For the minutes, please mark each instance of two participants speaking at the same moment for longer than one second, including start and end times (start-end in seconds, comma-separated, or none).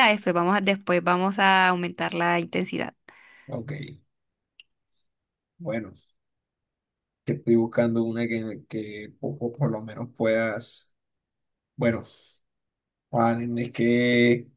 none